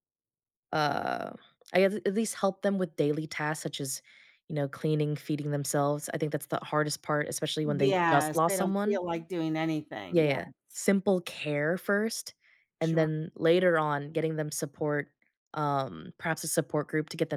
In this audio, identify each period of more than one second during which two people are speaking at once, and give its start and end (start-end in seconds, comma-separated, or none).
7.6-9.0